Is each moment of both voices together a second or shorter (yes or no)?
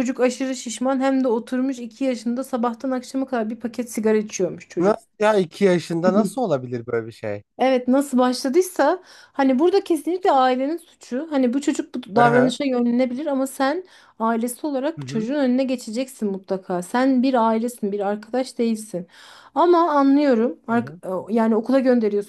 yes